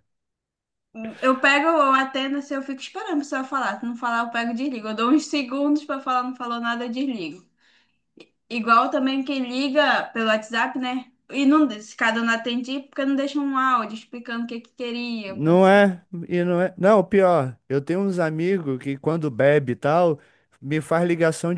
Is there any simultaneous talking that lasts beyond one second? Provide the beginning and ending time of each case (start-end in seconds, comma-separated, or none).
none